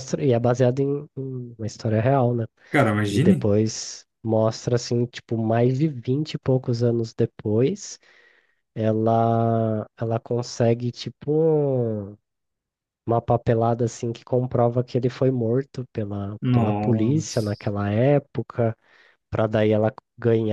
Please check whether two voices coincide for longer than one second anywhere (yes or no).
yes